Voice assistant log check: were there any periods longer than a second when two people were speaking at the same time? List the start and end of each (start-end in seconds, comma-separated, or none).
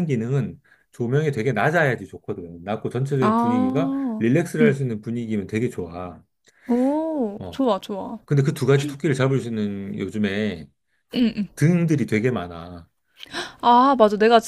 3.2-4.8